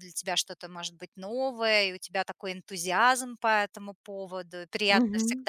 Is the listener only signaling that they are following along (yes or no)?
yes